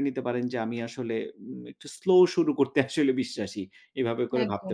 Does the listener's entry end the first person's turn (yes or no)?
yes